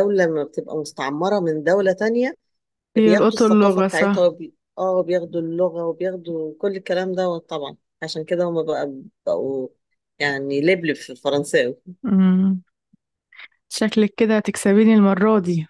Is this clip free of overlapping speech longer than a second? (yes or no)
no